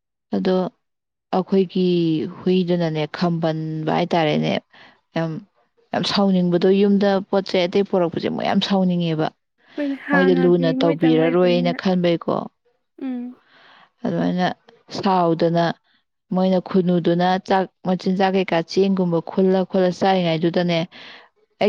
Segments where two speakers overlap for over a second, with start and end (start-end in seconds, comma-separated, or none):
10.1-11.8